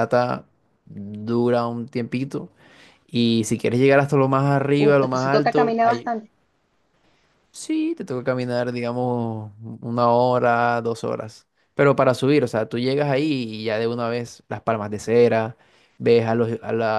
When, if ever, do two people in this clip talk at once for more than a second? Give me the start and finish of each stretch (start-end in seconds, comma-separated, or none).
4.8-6.1